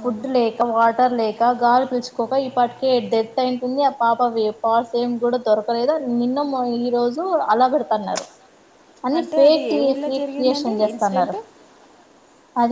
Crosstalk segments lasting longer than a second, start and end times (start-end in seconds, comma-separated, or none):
9.2-11.4